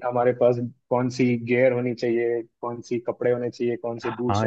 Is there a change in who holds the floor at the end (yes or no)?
yes